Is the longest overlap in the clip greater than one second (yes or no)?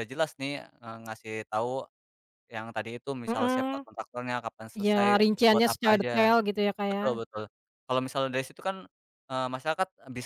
yes